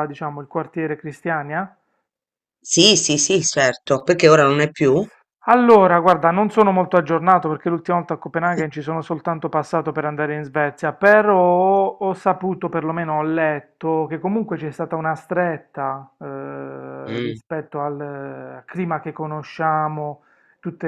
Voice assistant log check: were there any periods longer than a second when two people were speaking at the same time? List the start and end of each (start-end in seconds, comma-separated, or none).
none